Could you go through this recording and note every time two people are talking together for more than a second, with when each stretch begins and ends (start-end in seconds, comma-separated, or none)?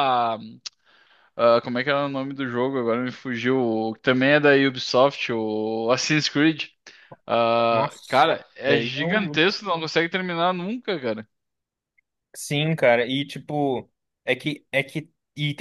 7.7-9.4